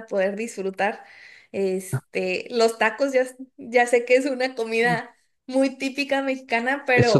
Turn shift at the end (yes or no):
yes